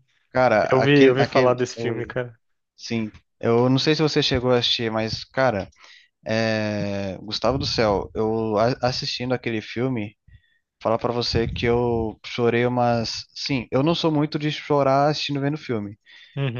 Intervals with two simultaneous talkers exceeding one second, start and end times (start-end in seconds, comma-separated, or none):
0.7-2.1